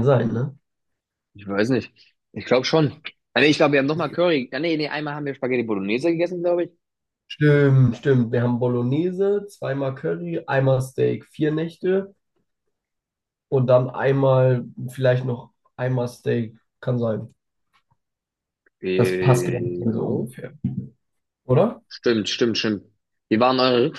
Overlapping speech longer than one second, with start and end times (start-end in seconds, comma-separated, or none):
19.0-20.3